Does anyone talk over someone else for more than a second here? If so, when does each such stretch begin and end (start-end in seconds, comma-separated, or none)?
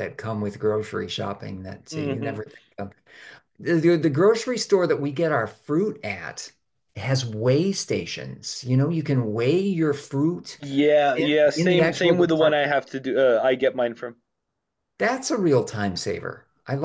11.1-12.7